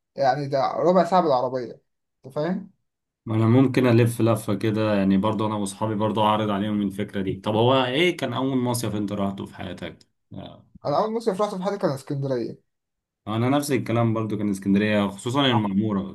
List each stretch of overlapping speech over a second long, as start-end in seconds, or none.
none